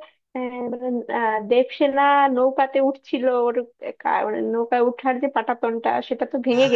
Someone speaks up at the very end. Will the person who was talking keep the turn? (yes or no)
yes